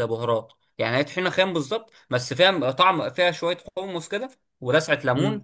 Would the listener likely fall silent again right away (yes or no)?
no